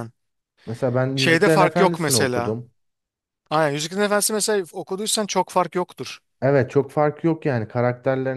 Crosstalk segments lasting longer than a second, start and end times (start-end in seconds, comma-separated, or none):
1.1-2.6